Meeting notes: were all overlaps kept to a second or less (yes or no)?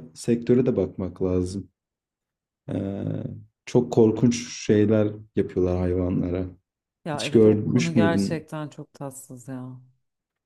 no